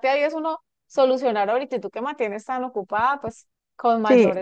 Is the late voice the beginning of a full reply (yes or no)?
yes